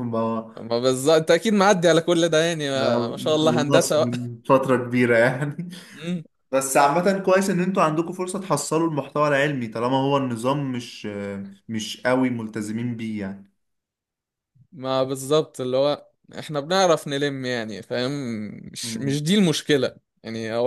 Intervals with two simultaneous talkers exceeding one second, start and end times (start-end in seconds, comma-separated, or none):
2.7-4.1